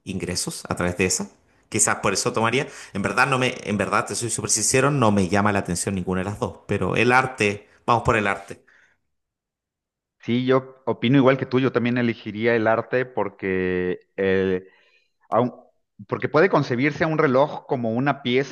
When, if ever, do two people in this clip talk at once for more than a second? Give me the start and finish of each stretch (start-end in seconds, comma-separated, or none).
none